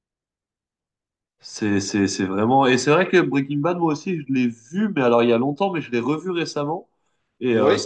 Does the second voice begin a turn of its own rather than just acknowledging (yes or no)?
no